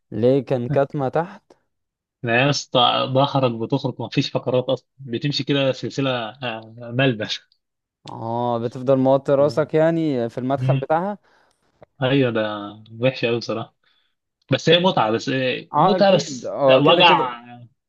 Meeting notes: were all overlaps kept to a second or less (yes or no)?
no